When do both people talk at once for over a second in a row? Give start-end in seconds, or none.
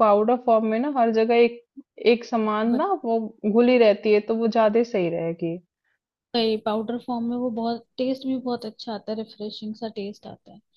none